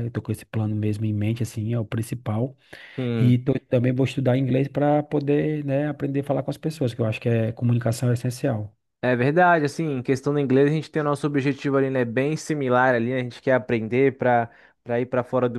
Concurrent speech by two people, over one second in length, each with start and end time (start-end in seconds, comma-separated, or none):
none